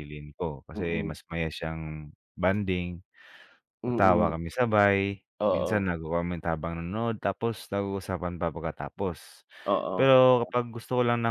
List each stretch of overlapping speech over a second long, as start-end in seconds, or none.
none